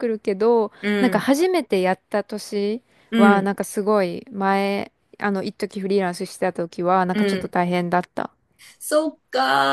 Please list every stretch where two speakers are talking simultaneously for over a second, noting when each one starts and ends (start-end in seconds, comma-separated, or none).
none